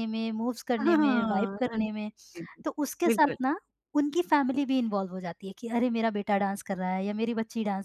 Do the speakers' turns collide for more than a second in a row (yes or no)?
yes